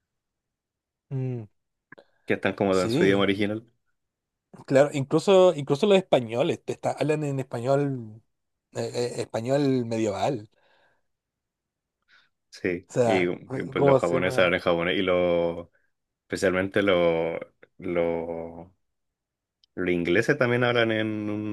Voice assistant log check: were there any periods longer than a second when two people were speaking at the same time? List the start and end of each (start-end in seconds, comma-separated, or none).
12.9-14.6